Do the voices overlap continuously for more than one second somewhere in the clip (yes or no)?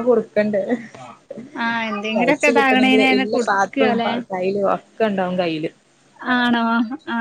yes